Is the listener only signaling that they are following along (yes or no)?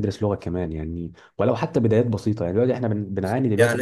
no